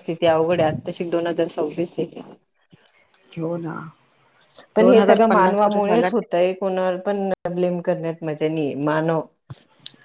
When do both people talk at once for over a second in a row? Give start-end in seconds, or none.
4.8-6.1